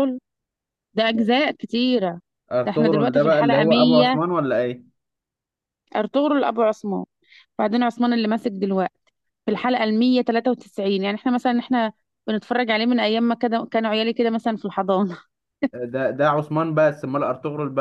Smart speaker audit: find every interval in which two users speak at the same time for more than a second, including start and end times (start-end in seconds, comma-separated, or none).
2.6-4.2